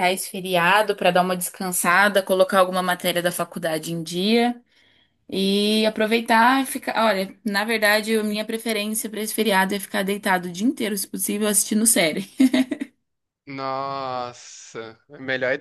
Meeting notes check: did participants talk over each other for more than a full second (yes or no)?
no